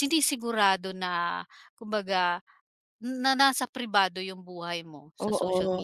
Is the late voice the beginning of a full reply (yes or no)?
yes